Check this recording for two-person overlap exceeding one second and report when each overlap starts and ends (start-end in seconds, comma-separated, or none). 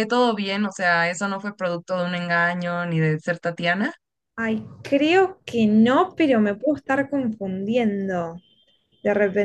none